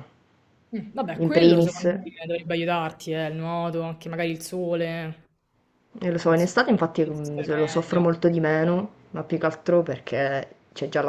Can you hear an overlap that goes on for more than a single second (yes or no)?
yes